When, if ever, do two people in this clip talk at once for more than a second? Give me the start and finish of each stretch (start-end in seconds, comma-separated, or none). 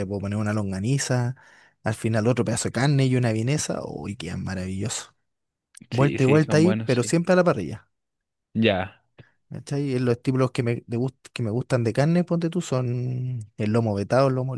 5.9-7.1